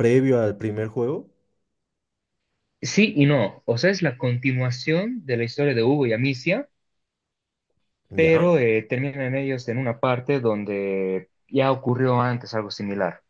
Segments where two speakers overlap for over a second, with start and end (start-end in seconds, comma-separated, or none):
none